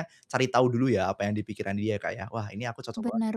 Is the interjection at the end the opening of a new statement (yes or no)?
yes